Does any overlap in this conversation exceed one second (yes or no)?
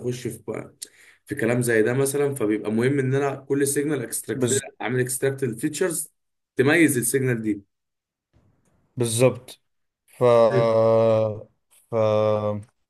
no